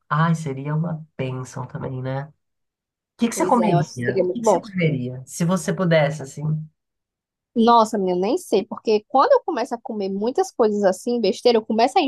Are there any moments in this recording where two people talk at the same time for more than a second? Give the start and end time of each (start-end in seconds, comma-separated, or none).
3.3-4.6